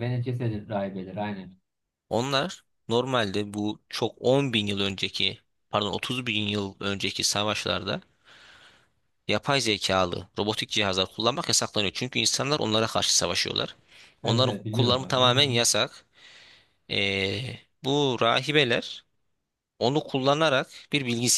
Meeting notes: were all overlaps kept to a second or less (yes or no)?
no